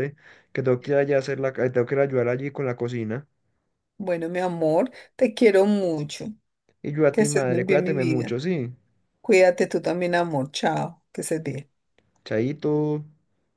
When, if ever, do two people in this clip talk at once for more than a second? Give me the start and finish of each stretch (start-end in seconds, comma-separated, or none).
7.1-8.4